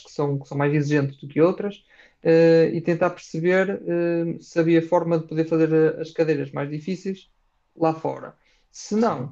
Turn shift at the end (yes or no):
no